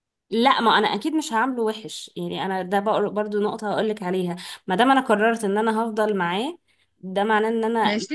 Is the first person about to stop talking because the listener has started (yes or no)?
no